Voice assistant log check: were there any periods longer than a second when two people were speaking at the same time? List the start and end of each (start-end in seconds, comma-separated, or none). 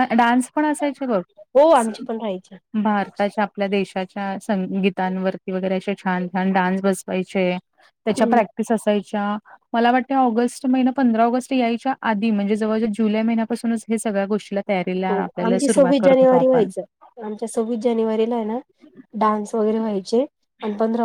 15.1-16.7